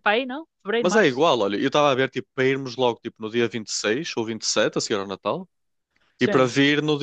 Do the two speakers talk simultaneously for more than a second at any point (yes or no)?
no